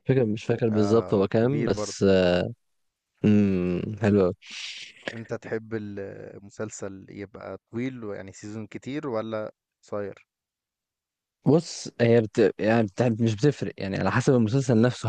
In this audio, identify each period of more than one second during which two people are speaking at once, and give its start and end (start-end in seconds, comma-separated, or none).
0.7-2.0